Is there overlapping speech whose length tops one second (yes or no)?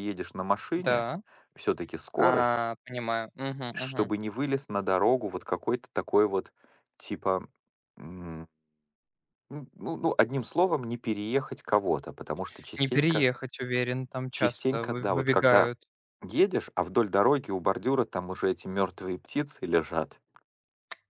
yes